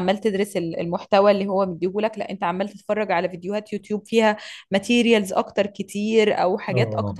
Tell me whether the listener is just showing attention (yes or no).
yes